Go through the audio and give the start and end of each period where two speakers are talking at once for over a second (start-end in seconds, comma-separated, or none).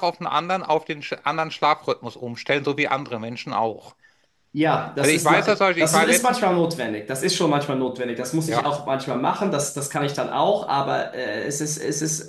5.0-6.6